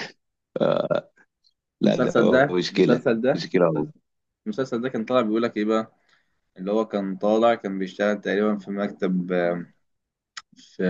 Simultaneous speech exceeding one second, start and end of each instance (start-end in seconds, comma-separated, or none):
1.8-3.5